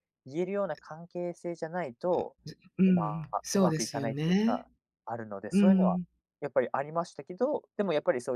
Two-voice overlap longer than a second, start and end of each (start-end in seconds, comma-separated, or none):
2.9-4.7